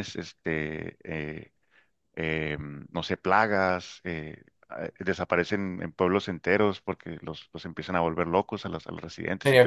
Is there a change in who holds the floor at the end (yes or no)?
yes